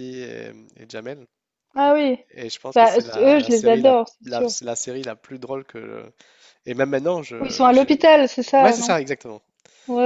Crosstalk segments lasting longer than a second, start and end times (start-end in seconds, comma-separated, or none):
2.7-4.5